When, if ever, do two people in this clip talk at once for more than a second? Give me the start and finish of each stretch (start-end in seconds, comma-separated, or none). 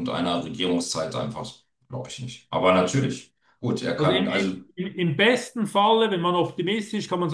none